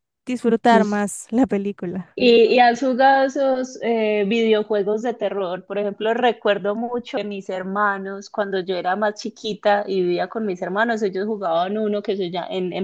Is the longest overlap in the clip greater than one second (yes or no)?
no